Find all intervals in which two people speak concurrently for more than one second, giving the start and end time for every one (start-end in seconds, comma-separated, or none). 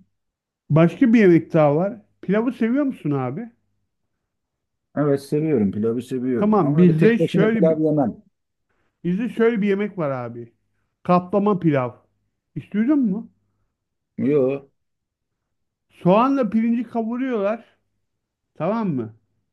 6.4-7.8